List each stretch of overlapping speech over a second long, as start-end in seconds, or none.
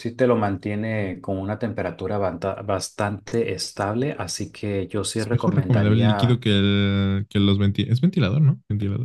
5.2-6.4